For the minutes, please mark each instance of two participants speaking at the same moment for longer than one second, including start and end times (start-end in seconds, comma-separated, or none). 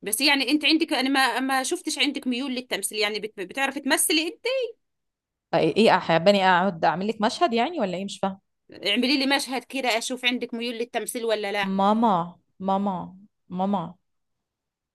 none